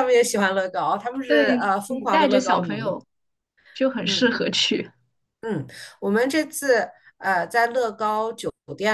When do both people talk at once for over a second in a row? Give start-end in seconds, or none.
1.3-3.0